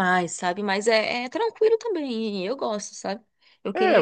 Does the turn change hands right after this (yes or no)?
yes